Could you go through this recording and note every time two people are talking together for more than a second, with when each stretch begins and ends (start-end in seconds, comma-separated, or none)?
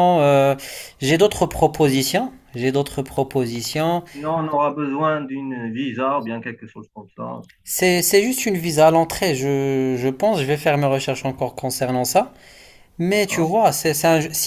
none